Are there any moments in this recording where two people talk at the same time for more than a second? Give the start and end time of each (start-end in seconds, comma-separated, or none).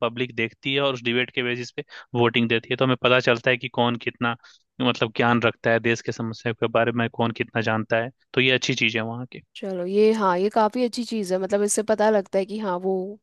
none